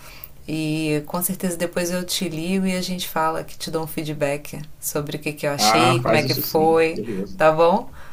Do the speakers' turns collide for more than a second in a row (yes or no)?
yes